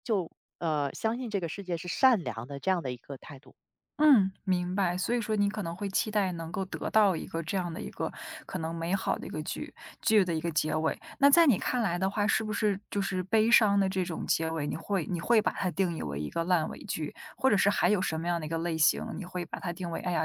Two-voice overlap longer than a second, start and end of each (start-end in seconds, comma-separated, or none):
none